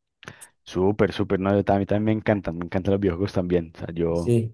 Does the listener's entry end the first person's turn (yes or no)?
no